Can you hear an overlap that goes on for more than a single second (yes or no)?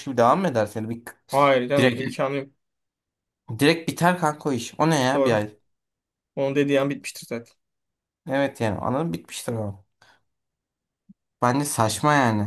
no